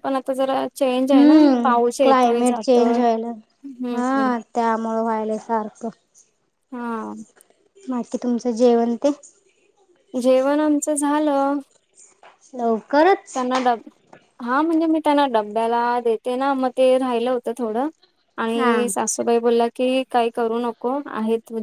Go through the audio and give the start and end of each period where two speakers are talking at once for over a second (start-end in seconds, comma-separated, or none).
1.1-3.0